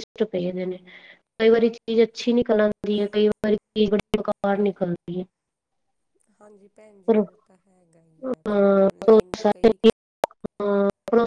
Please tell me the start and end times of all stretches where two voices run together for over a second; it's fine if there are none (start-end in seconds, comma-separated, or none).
8.3-9.8